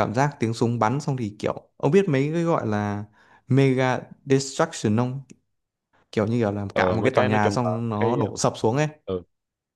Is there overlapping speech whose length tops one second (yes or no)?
yes